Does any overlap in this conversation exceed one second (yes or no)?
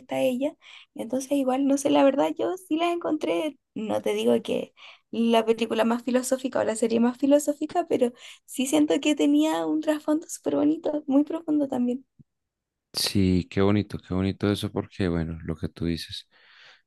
no